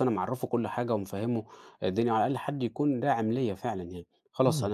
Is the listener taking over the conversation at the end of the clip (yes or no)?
yes